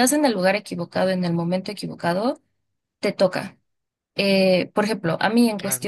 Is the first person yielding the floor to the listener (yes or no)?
no